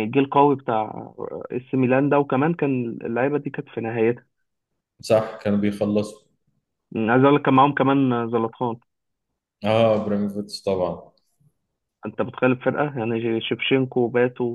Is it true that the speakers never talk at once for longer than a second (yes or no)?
yes